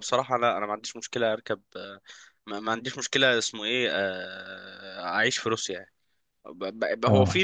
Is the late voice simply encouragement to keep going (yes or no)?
yes